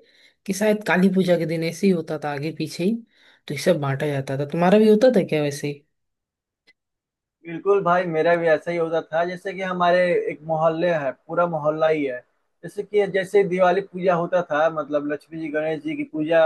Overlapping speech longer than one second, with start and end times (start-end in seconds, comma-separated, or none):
none